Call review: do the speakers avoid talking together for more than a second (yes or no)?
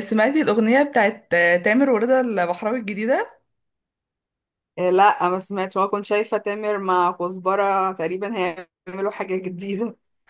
yes